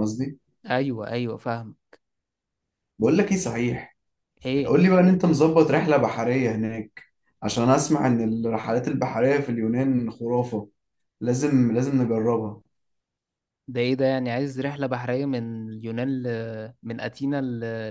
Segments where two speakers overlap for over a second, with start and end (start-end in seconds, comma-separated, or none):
none